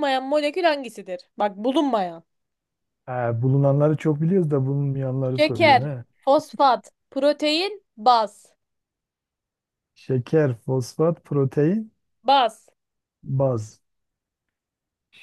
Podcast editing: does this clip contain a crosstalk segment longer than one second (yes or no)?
no